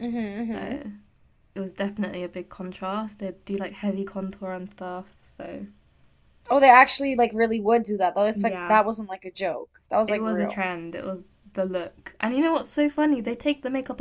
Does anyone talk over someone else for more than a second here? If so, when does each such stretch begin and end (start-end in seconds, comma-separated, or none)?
none